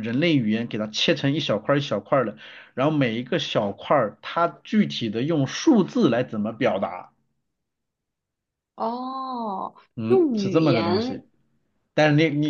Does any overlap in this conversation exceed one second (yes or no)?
yes